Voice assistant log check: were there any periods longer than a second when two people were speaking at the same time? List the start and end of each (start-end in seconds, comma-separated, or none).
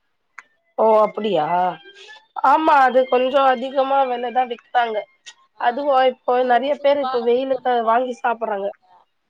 6.4-8.7